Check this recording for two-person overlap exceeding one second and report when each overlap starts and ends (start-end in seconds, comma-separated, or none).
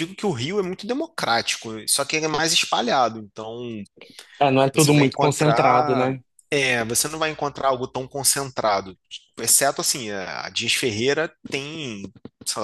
4.7-6.1